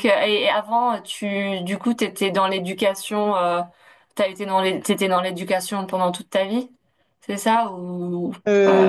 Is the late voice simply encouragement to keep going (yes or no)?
no